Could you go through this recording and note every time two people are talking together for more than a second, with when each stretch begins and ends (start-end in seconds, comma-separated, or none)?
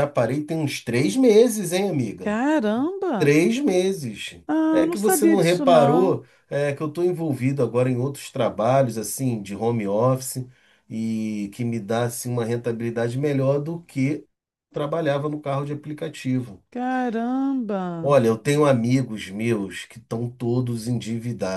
4.5-6.2